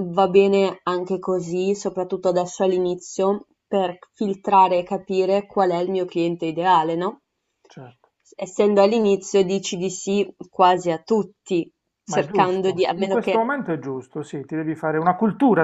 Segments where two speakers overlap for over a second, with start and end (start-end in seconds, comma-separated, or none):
12.1-13.5